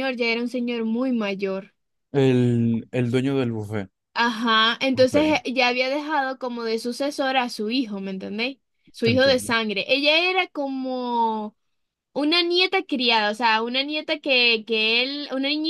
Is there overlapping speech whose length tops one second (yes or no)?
no